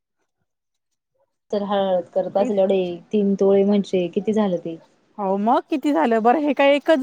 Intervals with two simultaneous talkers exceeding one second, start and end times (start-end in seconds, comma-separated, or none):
none